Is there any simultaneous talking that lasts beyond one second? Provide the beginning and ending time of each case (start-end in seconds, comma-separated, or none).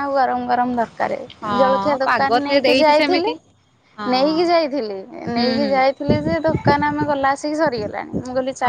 1.6-3.3